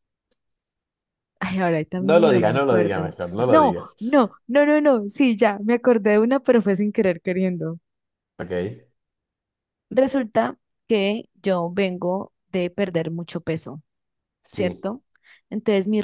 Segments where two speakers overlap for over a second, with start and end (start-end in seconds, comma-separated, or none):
2.0-4.0